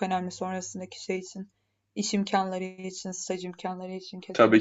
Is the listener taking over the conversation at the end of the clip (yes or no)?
yes